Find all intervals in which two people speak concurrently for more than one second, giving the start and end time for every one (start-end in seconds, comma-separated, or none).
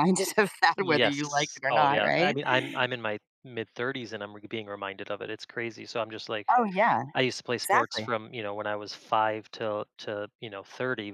0.8-2.4